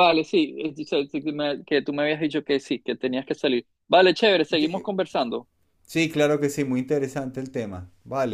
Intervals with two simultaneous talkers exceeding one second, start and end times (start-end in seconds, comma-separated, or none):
none